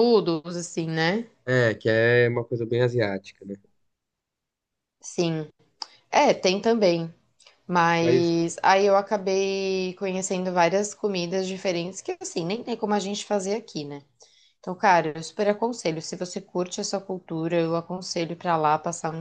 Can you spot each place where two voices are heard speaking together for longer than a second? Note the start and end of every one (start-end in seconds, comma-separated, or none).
none